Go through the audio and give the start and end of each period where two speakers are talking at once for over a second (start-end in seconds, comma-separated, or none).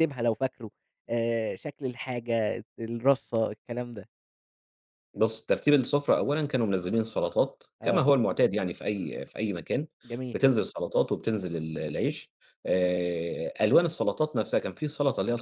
none